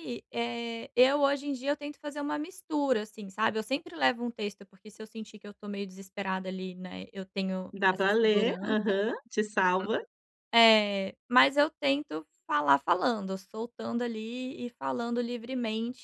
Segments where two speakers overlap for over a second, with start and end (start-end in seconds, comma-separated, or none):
7.7-9.0